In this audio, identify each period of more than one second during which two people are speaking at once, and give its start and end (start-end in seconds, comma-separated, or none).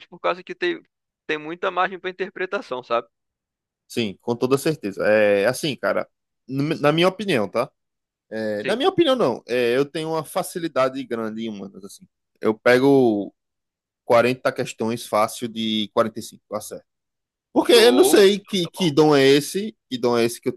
17.6-18.9